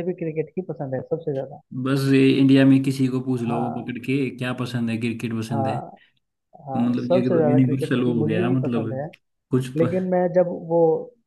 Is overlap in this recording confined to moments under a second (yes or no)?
no